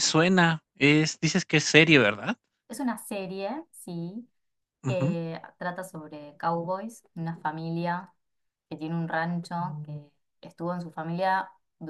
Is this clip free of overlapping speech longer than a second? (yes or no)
yes